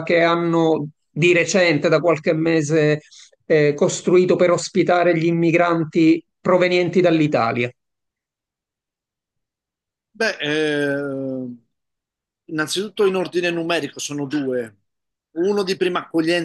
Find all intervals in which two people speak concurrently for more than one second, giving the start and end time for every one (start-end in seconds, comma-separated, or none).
none